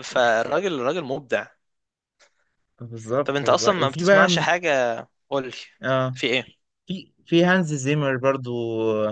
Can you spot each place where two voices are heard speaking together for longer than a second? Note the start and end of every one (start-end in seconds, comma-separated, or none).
3.2-4.5